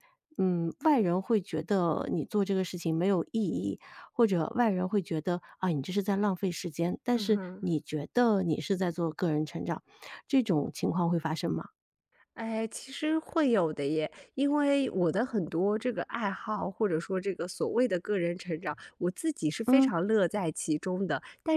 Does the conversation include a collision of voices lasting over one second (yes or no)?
no